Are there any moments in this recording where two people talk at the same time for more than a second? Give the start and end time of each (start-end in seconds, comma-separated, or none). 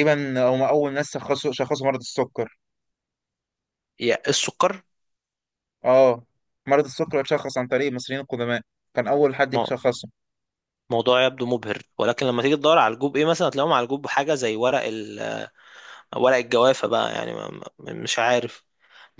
none